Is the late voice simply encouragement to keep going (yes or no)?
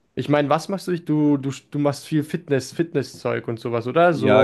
no